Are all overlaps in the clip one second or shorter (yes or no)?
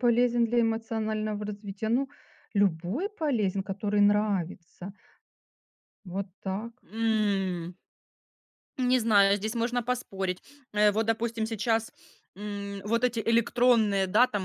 yes